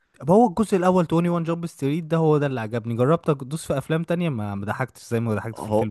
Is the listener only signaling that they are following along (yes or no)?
no